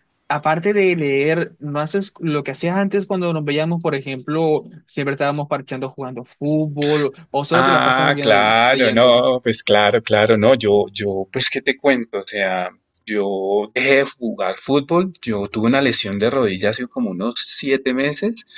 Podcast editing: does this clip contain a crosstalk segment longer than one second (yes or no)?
yes